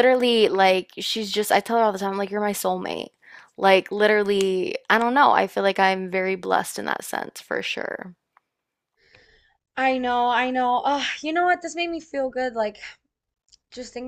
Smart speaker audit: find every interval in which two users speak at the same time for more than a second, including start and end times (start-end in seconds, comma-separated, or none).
none